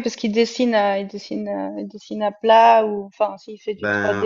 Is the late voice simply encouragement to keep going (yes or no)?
no